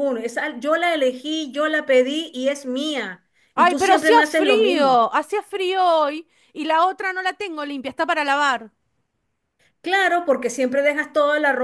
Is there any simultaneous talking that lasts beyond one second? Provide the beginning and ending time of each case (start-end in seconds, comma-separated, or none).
3.5-5.0